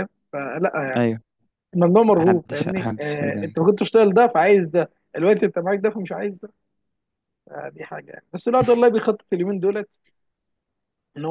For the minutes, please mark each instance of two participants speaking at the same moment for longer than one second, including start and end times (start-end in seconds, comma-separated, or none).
2.2-3.7